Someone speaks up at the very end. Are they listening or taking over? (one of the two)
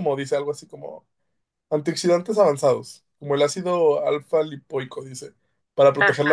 listening